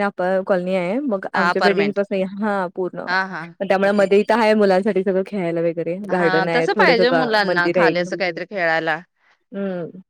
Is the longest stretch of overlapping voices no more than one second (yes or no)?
no